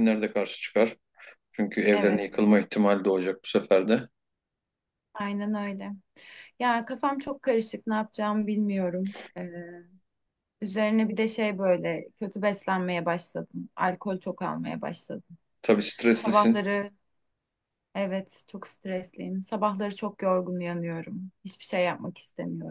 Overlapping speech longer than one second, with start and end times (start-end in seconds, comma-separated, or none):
none